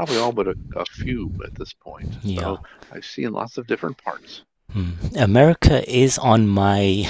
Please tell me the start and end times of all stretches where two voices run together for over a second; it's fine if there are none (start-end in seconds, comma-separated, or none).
none